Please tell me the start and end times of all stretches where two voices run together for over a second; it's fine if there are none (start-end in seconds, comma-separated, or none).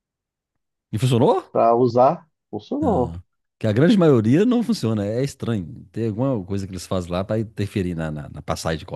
none